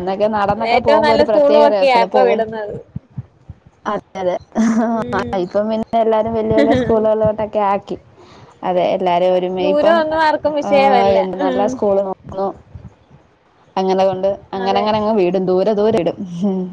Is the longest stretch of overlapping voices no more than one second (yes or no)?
no